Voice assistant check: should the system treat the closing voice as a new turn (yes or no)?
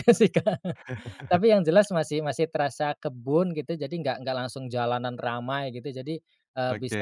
no